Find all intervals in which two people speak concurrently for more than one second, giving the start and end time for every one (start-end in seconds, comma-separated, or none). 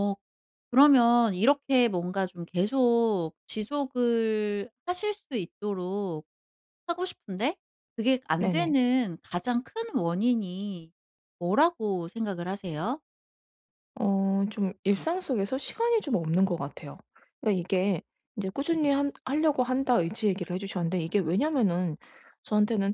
none